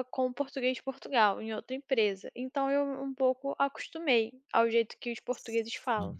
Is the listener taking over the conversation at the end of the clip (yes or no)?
no